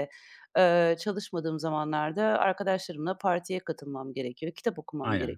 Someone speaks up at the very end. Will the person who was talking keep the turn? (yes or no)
yes